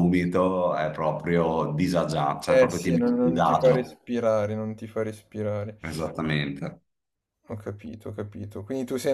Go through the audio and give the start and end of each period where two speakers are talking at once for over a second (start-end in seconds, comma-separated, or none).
2.4-3.9